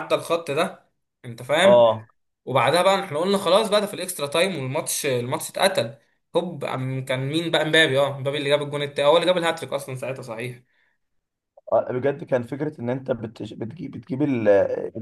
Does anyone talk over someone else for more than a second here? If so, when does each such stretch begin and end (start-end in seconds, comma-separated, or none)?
none